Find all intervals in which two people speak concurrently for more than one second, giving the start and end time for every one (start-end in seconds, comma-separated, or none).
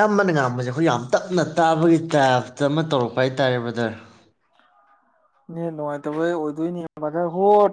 none